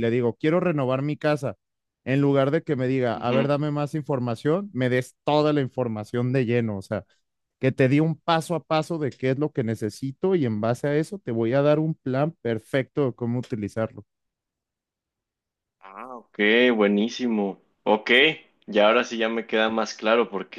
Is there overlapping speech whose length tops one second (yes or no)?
no